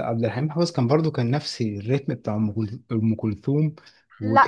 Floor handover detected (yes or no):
no